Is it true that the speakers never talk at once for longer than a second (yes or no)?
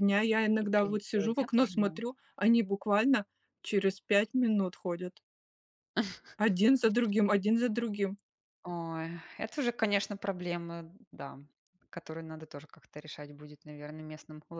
no